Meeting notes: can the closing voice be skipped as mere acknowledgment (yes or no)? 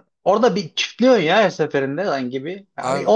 yes